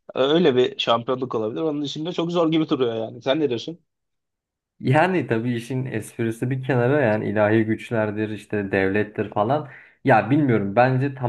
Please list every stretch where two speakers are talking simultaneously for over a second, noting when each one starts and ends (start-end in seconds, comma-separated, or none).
none